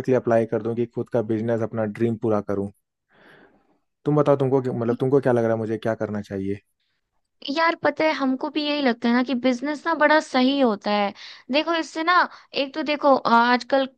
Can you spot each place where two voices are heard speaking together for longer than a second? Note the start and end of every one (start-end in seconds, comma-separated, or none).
none